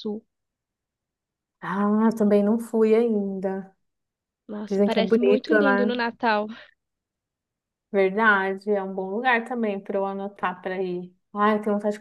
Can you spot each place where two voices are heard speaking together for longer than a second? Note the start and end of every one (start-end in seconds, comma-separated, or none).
4.7-6.0